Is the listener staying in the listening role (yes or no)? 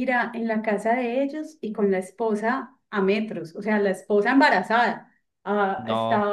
yes